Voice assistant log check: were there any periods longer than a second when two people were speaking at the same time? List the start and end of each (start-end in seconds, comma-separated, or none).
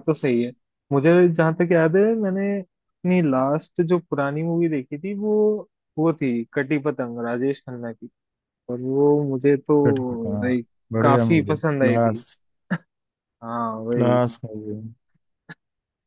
10.4-12.2